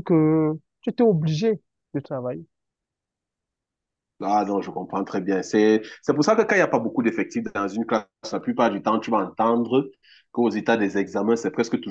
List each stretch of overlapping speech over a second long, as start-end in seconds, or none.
none